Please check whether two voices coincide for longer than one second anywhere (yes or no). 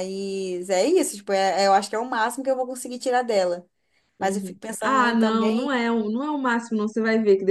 yes